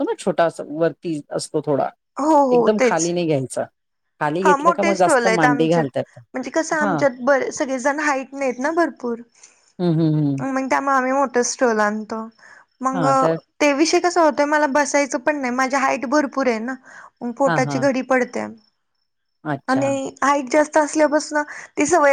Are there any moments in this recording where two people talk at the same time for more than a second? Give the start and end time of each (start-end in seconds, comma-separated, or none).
4.4-5.9